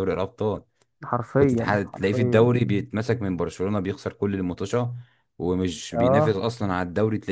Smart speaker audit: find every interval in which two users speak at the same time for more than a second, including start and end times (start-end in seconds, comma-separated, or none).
1.4-2.6